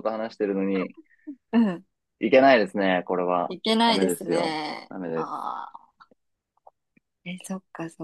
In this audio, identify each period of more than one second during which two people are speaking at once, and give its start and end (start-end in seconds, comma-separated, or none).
3.5-5.6